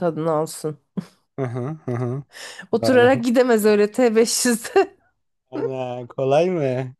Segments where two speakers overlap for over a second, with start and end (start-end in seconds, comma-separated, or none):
none